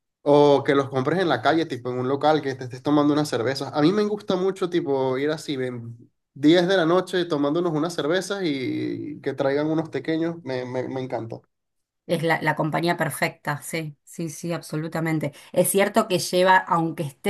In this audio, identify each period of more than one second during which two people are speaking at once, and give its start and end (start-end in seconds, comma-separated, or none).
none